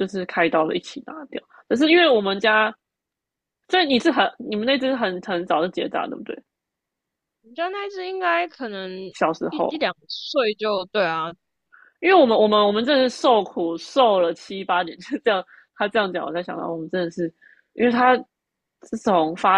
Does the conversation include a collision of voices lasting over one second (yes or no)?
no